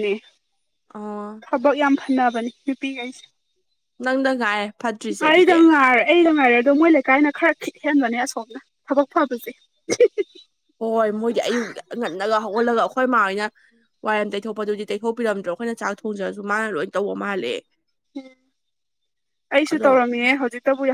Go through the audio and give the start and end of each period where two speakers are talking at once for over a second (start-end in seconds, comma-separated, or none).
none